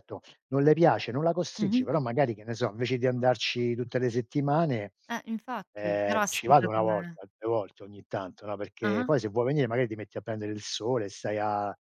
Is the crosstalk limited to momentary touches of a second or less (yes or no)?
no